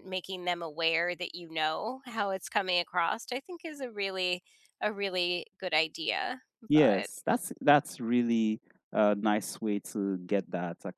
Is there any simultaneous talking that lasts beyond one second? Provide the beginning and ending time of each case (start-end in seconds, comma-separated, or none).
none